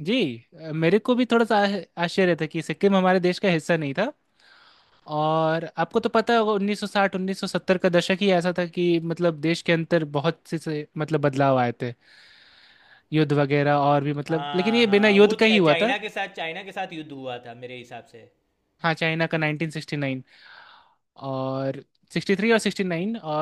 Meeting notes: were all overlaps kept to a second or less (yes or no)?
no